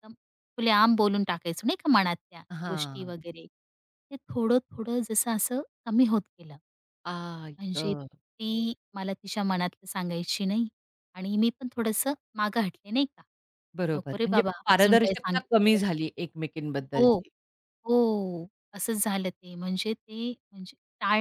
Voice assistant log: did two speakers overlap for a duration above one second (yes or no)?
yes